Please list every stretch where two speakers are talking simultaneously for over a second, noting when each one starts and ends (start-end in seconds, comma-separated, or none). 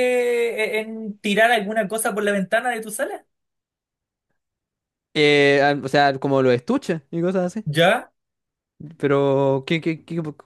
none